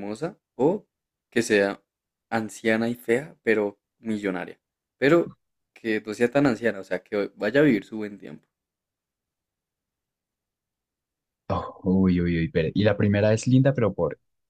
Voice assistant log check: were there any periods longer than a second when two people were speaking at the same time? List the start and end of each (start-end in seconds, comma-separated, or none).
none